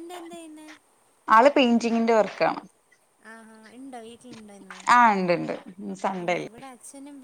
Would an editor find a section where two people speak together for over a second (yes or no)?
no